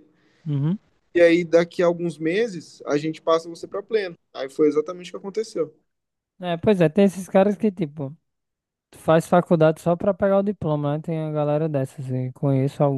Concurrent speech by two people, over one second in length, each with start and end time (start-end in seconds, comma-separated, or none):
none